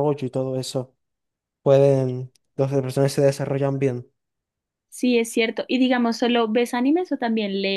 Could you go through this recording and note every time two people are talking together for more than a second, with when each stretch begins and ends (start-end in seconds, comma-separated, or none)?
none